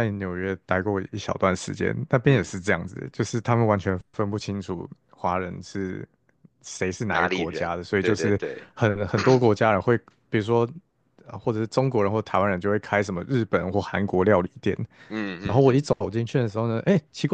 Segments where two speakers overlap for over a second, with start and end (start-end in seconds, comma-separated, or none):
7.1-8.7